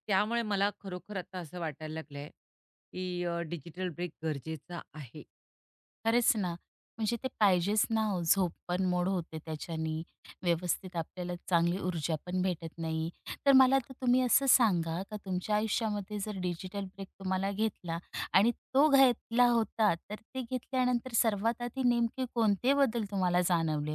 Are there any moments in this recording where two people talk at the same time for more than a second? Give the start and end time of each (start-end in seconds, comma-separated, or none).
none